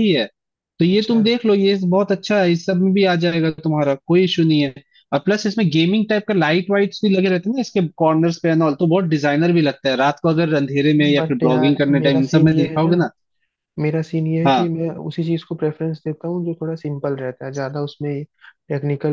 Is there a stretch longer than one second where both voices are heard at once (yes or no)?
yes